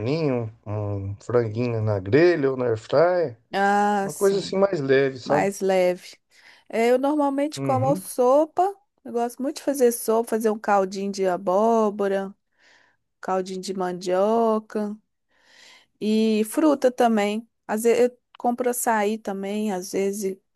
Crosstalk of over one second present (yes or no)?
no